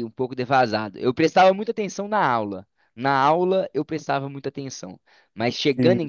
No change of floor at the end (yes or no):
yes